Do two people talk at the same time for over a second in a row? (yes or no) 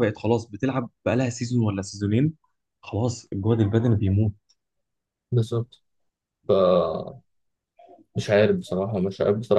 no